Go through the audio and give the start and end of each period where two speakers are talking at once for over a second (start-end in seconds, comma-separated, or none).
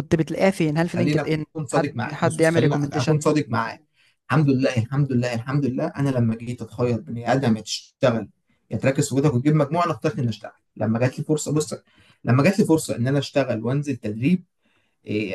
1.0-3.2